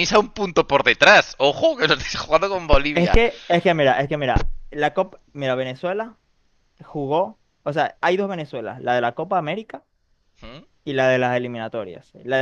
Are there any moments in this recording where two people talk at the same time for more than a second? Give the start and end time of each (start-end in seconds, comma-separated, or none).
none